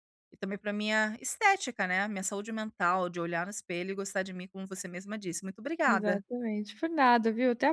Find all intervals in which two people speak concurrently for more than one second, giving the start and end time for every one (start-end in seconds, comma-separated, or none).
none